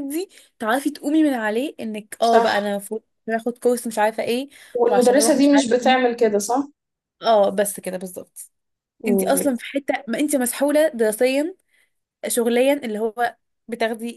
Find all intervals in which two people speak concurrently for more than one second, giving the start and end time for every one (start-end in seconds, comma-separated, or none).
4.9-6.1